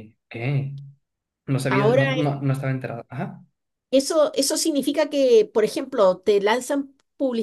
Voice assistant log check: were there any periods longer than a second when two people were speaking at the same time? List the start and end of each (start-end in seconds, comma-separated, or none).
none